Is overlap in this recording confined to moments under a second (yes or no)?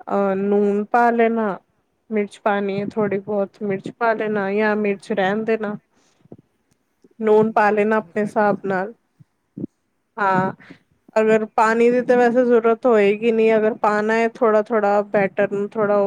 no